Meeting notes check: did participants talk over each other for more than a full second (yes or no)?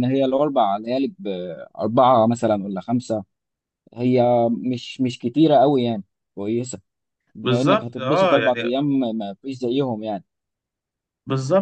yes